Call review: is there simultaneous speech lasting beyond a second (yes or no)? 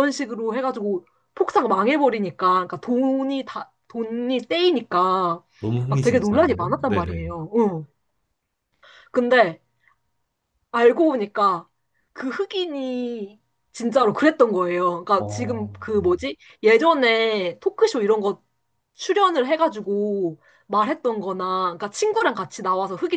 yes